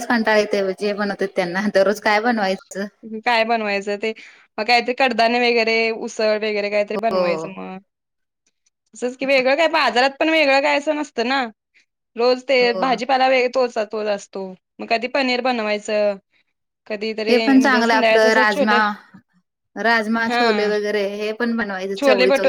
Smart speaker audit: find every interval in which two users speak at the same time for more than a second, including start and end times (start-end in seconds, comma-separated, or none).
17.3-18.8